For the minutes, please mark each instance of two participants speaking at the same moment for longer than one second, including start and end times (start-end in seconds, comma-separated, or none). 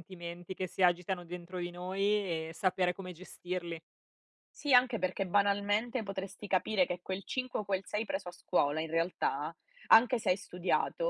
none